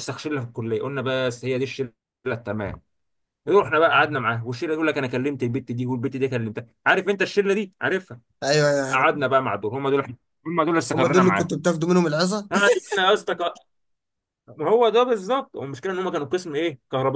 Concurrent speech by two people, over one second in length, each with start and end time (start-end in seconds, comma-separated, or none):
none